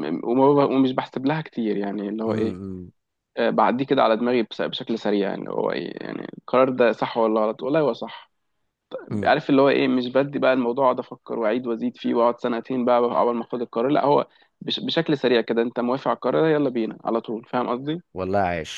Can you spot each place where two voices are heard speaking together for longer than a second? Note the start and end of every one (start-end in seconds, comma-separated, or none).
none